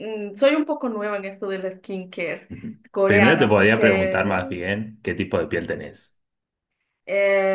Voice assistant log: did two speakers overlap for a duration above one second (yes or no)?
yes